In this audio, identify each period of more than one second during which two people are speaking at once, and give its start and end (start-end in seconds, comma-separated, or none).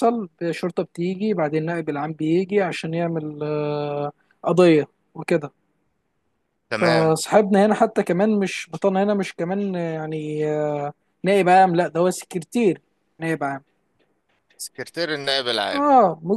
none